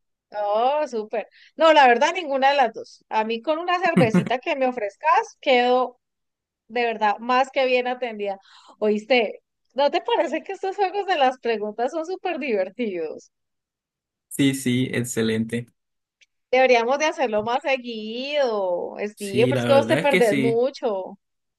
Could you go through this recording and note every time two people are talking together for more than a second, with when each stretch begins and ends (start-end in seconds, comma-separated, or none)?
19.1-20.6